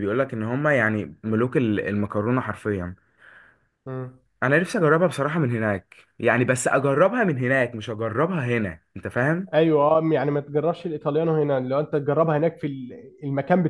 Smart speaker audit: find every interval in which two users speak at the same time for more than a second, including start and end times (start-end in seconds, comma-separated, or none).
none